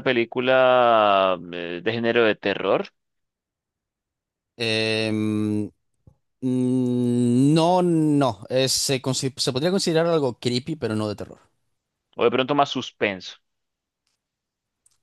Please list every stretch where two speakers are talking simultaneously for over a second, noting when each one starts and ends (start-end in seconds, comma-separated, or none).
none